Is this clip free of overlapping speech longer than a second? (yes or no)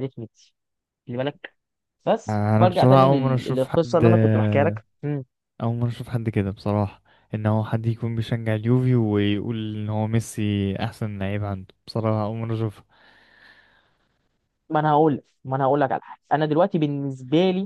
no